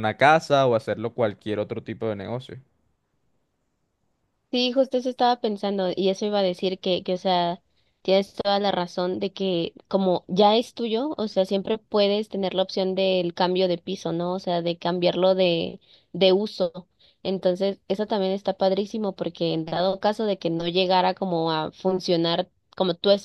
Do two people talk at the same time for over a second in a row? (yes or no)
no